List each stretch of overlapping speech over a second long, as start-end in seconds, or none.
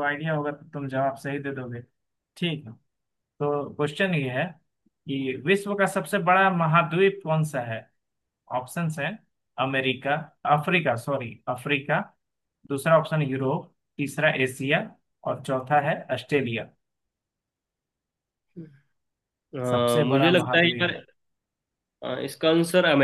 19.7-21.0